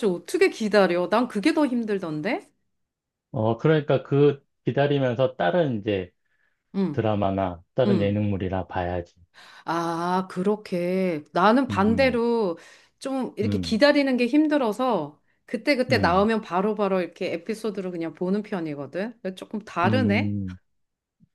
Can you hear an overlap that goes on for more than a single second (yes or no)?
no